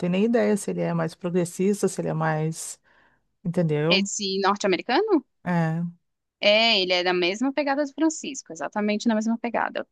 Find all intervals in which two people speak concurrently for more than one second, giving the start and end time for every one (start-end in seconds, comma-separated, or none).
none